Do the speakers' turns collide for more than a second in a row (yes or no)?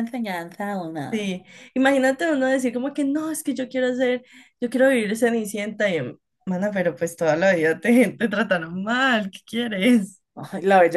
no